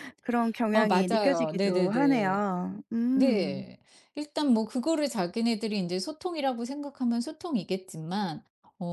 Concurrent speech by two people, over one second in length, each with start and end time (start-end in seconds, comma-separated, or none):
0.7-3.7